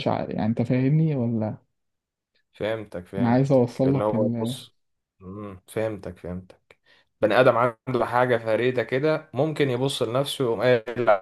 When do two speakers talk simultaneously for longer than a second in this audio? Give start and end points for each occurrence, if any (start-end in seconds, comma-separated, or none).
3.2-4.5